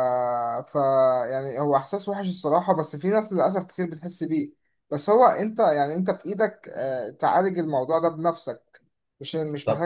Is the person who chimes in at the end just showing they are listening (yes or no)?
no